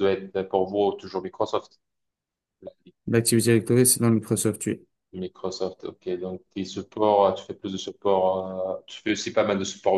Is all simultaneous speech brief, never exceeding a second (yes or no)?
yes